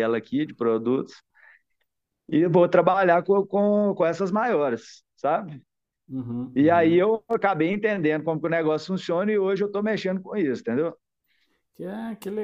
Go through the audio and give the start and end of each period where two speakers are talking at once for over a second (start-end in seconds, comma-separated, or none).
none